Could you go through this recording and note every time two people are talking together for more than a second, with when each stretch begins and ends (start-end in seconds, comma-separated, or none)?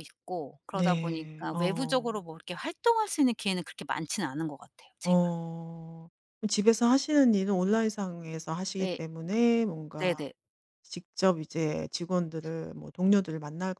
0.7-2.2